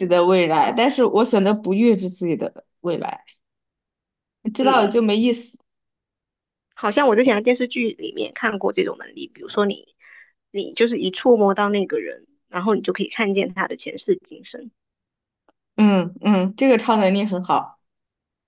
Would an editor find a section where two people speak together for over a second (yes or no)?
no